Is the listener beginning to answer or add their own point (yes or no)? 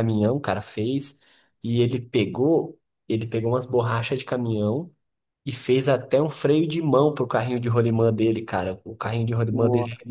no